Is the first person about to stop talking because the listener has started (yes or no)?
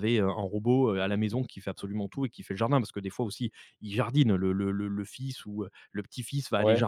no